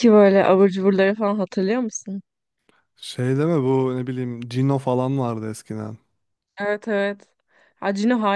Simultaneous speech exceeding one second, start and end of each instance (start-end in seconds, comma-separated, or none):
none